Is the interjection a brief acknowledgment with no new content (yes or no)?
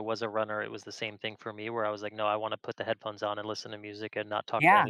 no